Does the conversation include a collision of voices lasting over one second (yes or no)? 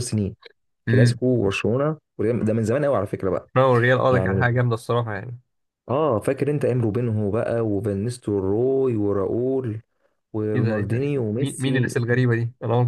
yes